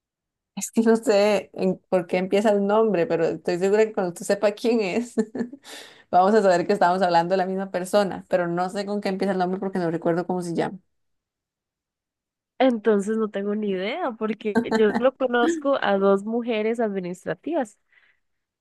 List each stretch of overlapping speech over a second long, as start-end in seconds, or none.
none